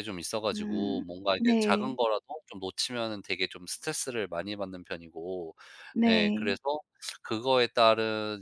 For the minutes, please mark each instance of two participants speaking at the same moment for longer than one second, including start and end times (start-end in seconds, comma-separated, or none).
0.5-2.0